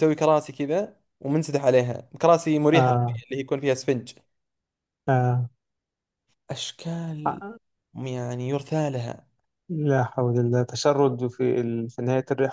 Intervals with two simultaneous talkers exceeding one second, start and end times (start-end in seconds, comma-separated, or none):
none